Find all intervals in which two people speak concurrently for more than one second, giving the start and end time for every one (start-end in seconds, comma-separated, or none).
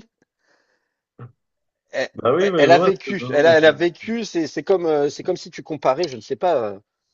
2.6-4.0